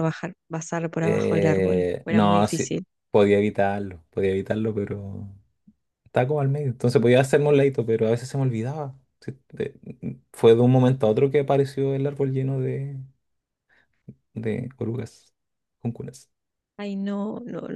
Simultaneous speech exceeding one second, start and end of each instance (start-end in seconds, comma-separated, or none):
1.0-2.9